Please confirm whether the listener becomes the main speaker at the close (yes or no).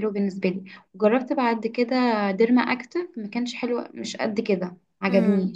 yes